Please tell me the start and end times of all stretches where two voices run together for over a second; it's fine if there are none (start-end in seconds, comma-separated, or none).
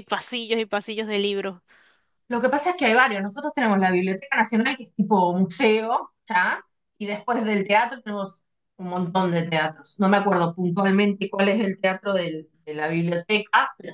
none